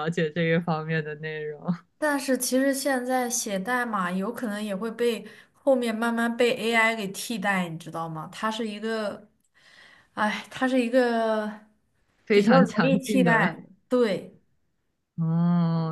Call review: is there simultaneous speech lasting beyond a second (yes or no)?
yes